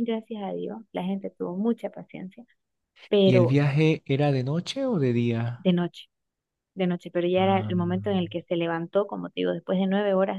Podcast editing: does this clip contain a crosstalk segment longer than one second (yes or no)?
no